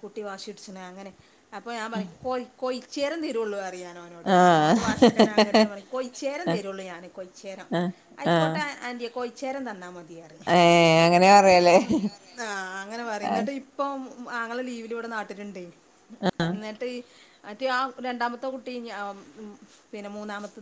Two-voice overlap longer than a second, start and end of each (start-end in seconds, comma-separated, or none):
none